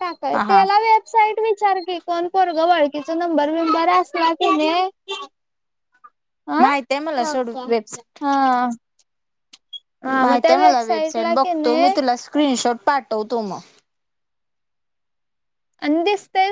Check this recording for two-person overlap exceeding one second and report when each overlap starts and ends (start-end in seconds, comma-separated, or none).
10.2-11.9